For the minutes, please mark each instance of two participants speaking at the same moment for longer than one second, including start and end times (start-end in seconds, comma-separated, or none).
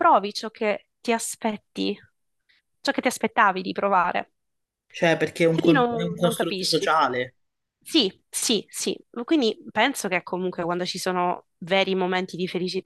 5.5-6.9